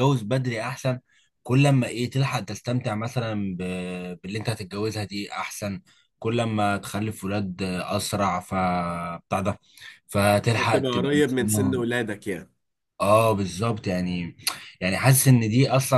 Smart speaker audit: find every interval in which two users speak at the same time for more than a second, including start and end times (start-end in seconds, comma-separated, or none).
10.6-11.8